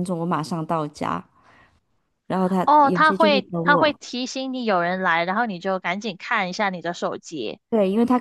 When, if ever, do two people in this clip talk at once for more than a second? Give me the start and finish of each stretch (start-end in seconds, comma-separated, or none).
2.6-4.0